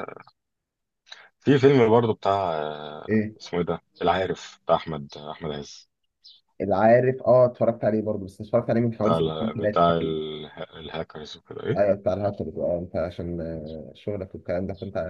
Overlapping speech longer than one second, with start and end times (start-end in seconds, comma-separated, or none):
9.0-10.2